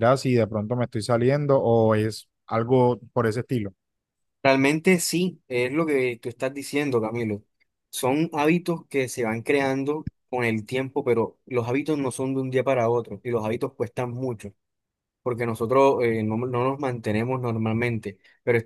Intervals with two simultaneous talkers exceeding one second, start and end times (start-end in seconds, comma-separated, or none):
none